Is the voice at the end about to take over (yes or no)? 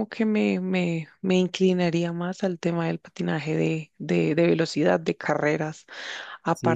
no